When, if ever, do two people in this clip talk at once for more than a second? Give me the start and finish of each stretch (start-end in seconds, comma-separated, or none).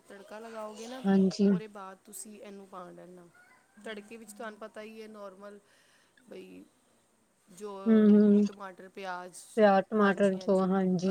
none